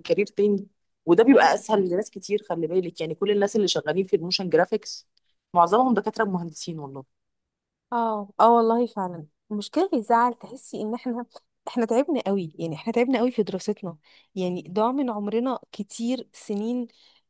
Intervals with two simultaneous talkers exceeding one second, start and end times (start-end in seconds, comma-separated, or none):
none